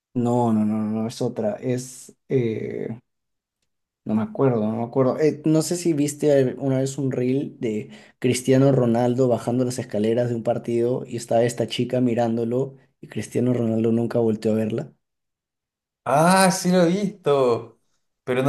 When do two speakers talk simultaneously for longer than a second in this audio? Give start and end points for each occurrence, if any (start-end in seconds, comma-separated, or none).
none